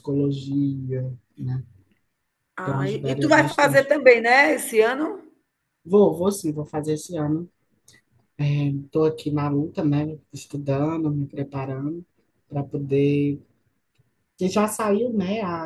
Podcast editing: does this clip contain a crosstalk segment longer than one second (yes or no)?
yes